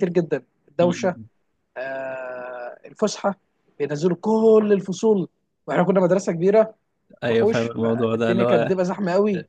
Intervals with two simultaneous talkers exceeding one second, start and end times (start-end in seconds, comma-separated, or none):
7.3-8.8